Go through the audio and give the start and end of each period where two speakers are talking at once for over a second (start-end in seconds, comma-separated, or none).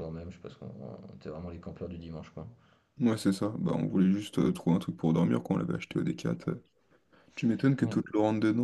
none